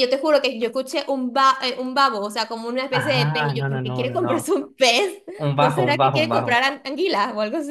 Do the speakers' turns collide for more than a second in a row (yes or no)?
yes